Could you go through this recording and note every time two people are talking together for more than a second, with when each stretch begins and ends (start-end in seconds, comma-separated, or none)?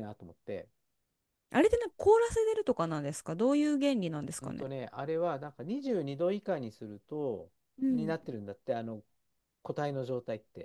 none